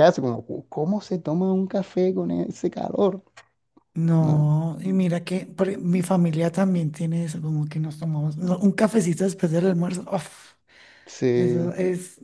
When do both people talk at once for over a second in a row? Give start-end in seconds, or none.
none